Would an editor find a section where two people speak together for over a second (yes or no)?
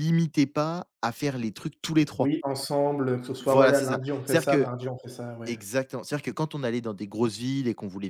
yes